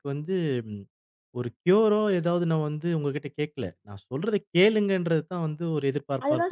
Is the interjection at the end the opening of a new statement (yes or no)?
yes